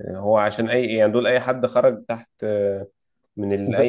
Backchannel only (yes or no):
yes